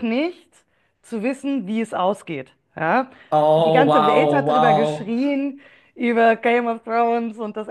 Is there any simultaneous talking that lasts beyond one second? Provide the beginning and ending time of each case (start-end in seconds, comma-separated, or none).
3.6-5.1